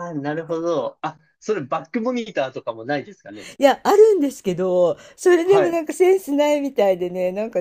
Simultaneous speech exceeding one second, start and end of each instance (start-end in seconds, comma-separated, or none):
none